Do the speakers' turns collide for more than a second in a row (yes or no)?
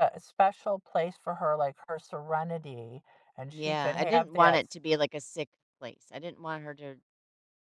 yes